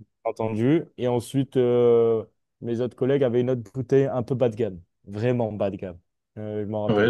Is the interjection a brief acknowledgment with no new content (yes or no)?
no